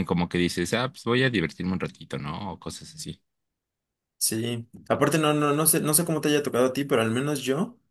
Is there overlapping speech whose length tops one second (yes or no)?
no